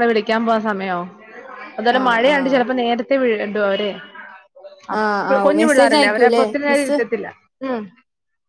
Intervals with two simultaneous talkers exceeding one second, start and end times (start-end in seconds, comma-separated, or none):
5.0-7.0